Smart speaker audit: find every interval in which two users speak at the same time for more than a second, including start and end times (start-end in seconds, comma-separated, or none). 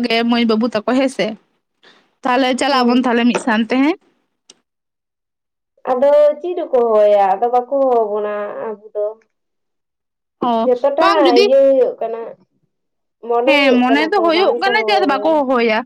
13.4-15.3